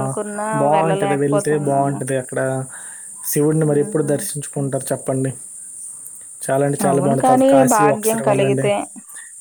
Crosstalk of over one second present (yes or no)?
yes